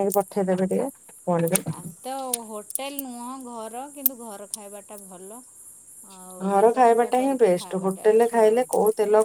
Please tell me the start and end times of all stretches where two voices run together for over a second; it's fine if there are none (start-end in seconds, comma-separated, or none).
6.5-8.6